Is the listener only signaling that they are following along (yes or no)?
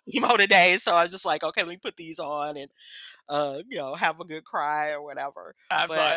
no